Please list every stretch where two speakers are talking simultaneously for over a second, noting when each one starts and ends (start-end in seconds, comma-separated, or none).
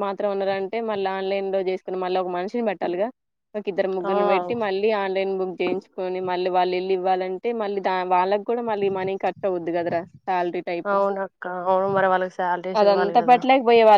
none